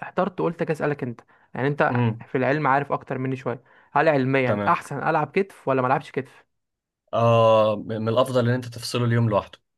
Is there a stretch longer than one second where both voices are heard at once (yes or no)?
no